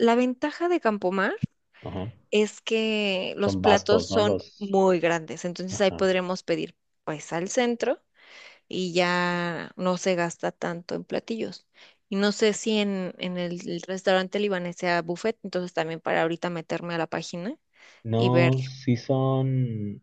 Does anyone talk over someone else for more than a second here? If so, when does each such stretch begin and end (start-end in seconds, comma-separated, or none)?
3.4-4.8